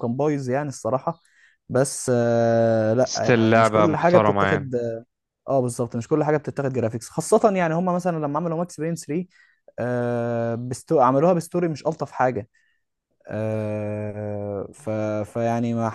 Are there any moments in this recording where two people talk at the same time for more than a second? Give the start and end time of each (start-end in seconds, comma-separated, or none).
3.0-4.7